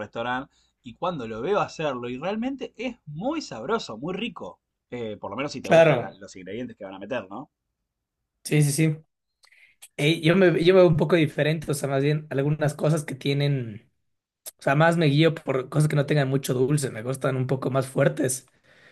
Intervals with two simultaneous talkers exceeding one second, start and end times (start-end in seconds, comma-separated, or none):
none